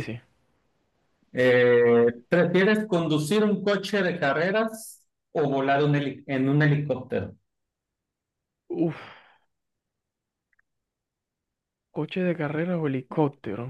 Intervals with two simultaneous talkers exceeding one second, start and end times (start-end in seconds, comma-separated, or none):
none